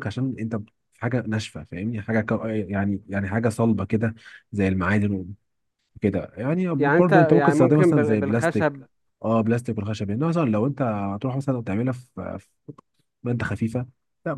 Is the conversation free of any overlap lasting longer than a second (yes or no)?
no